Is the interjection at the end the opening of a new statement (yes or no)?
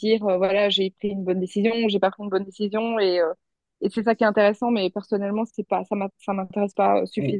yes